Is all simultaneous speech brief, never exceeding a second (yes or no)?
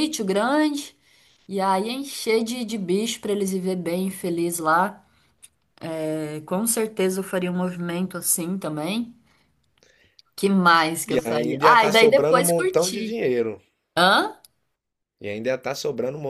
no